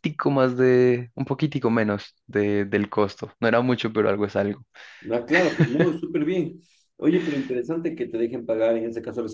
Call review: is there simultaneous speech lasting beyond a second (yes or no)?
no